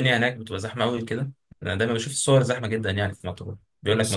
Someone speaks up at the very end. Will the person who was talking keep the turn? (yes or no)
yes